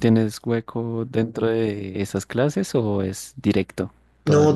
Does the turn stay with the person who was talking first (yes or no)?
no